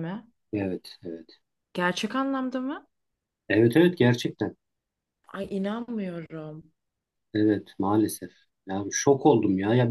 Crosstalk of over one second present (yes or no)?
no